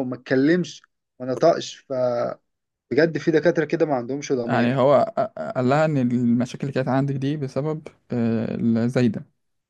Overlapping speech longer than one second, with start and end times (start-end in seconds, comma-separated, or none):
none